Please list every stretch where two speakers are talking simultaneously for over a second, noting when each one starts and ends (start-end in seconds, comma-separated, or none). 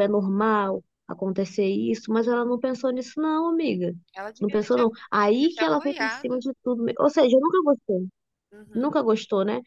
4.4-6.4